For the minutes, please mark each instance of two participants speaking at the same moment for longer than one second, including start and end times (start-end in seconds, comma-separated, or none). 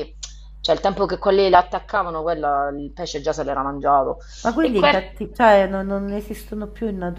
none